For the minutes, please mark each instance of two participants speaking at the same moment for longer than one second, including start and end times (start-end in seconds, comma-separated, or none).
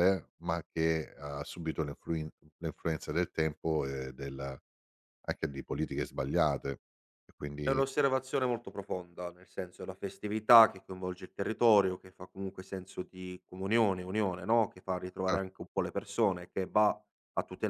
none